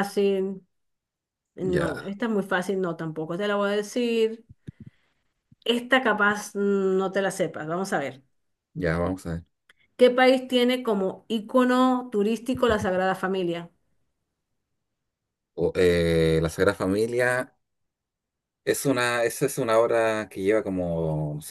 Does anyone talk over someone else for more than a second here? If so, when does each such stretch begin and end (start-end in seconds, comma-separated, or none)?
none